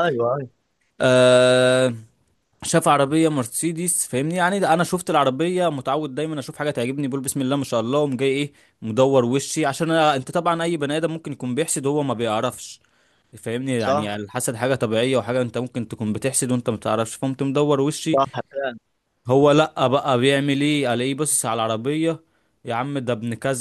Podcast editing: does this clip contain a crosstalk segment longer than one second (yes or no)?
no